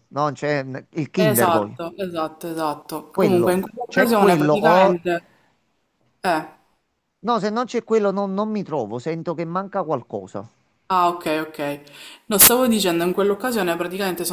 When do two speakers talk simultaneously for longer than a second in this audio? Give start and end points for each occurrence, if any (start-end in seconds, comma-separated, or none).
3.1-5.0